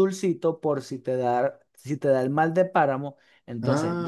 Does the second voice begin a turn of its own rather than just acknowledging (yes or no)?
yes